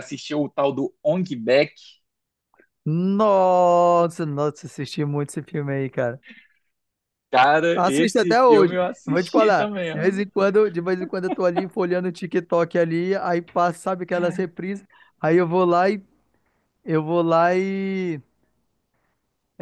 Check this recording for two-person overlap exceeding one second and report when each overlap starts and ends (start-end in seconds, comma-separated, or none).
7.8-10.2